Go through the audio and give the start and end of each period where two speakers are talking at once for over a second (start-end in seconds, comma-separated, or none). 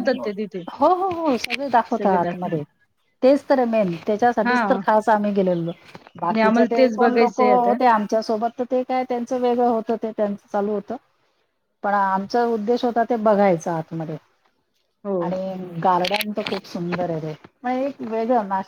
6.2-7.8